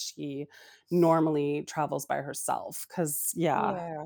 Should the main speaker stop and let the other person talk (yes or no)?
no